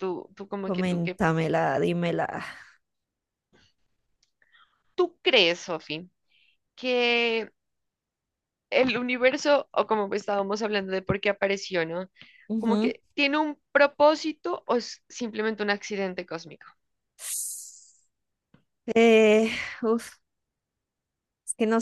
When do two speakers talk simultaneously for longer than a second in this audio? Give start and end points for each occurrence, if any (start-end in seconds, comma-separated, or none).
none